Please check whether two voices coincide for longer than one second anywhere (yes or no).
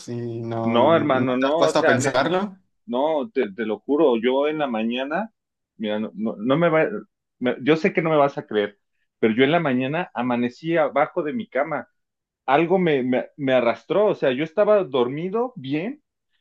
yes